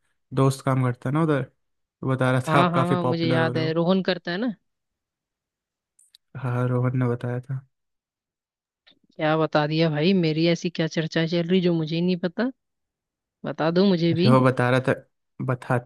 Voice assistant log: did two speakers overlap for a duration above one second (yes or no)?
yes